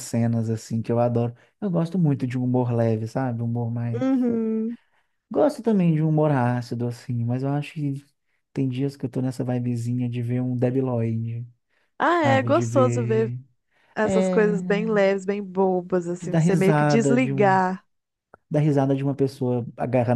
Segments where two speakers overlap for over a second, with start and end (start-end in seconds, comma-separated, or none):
12.1-13.3, 16.2-17.6